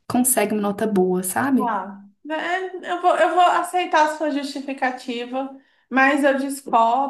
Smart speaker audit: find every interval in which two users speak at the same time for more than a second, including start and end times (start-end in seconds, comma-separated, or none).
none